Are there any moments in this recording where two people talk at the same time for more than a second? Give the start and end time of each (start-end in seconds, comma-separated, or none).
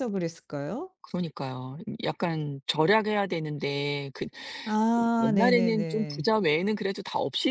5.0-6.3